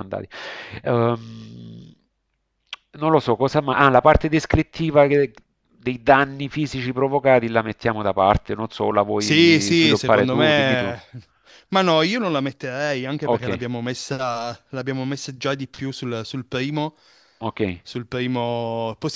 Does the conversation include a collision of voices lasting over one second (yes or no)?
yes